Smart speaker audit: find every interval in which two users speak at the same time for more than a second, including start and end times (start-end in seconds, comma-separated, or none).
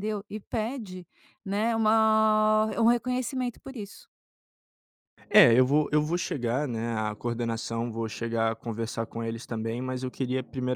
none